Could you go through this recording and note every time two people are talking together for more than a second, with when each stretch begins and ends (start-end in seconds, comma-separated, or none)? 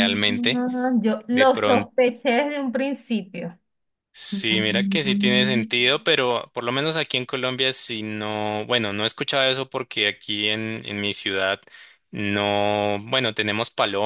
4.3-5.7